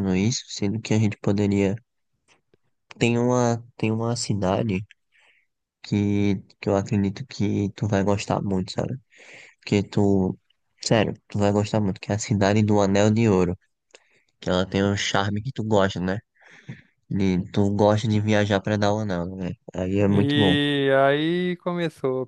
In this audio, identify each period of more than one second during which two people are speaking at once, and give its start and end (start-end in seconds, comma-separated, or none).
none